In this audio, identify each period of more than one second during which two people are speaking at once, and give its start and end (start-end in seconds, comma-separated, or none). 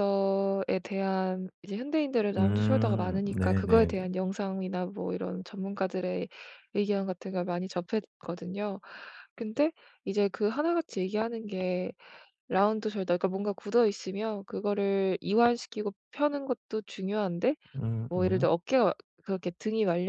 2.4-3.9